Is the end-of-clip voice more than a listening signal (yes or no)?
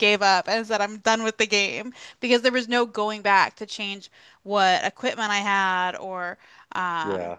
no